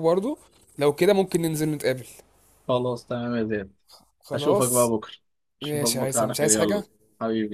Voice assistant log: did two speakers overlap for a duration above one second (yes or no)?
yes